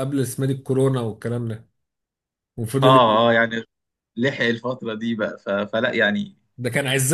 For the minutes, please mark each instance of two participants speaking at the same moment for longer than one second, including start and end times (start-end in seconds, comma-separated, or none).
none